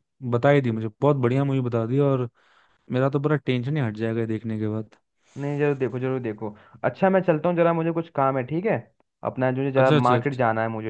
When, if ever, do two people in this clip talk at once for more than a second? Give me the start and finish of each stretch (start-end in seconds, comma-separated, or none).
none